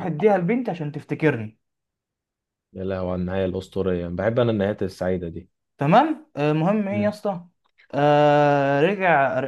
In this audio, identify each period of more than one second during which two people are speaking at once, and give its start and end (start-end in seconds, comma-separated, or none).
none